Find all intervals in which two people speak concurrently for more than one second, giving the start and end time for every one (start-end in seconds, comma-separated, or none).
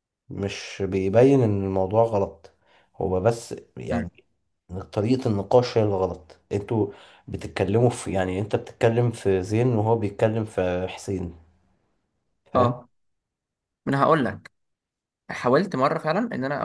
none